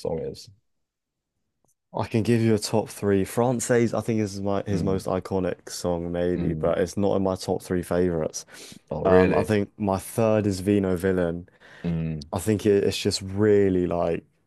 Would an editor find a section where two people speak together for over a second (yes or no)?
no